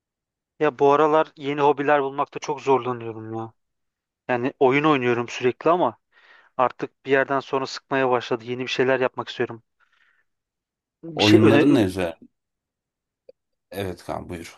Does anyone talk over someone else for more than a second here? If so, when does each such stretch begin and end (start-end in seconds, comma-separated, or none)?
none